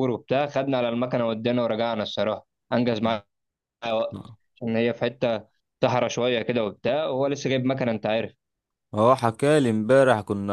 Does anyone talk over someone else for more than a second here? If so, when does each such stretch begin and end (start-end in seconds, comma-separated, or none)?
none